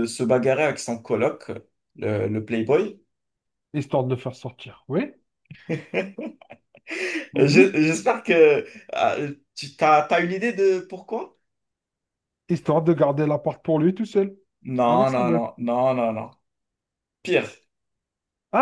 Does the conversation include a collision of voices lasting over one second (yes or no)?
no